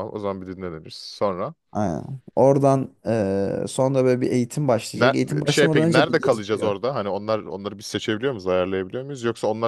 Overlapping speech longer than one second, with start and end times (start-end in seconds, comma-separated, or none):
4.9-6.7